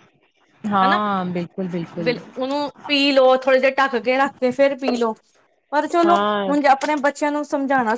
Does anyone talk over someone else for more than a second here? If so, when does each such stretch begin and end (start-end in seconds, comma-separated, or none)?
none